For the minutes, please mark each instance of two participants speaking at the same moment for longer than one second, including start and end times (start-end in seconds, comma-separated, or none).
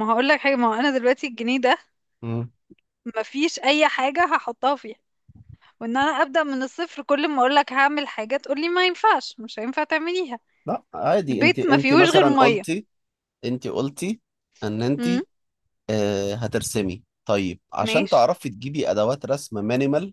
11.3-12.6